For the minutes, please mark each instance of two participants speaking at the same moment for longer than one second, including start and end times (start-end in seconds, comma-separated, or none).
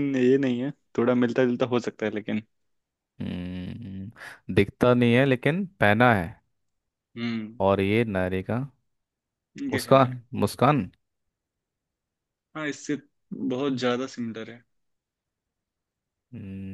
none